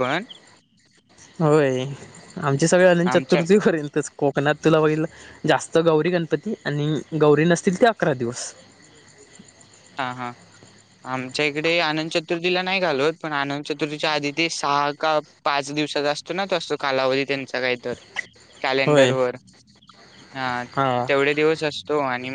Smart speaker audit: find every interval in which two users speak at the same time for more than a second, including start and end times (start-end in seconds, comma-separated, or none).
none